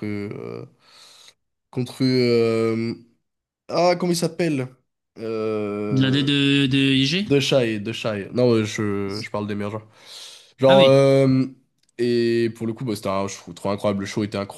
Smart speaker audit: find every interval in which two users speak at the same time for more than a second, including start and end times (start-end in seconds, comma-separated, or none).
none